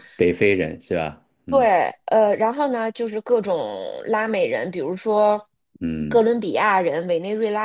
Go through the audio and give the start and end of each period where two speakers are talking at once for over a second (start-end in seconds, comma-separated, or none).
none